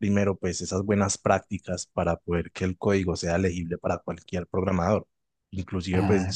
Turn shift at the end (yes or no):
no